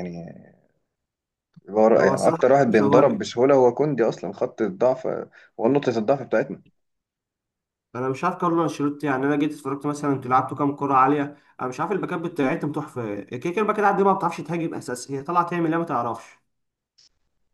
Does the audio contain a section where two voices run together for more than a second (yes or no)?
yes